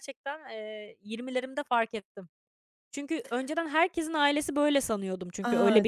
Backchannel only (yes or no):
no